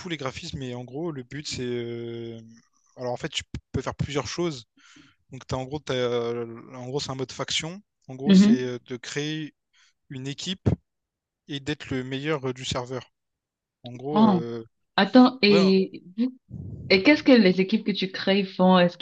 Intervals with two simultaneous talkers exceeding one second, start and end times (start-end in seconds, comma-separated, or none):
none